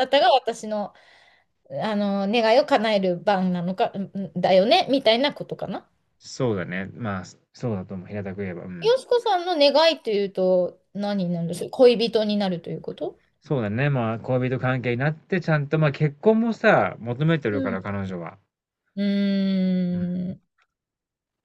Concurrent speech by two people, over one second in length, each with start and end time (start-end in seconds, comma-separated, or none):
none